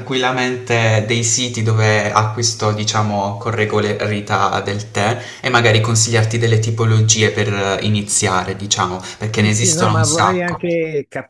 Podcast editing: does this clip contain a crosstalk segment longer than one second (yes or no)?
yes